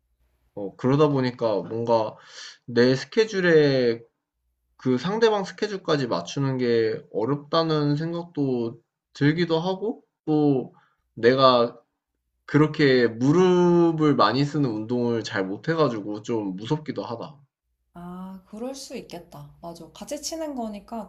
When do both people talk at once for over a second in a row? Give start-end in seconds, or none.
none